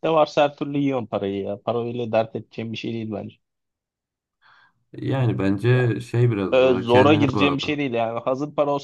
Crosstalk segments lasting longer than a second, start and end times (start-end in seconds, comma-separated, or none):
6.5-7.8